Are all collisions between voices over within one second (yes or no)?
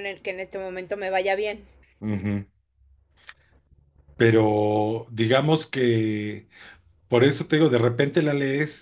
yes